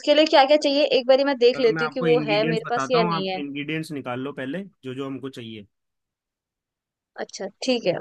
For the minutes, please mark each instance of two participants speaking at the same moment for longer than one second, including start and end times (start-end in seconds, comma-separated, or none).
1.5-3.4